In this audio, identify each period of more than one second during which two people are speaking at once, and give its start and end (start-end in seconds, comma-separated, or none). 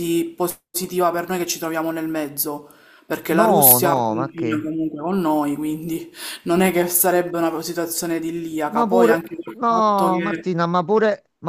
3.3-4.7, 8.7-10.5